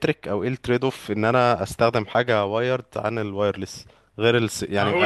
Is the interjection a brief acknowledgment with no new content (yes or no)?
yes